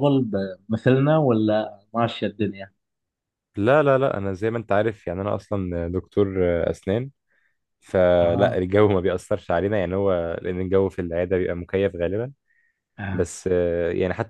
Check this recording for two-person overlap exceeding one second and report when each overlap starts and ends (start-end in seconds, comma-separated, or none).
none